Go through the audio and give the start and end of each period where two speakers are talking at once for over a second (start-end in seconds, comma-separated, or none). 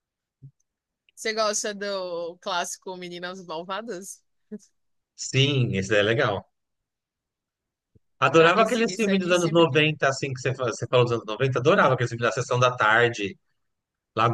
8.4-9.8